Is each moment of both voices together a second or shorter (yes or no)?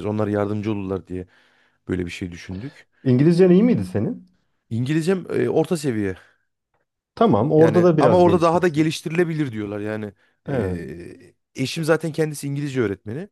no